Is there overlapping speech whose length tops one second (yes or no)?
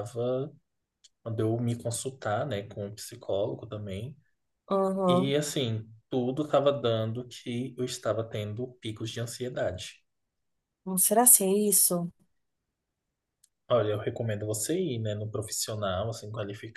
no